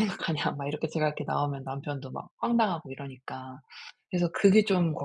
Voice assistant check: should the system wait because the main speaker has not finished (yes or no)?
no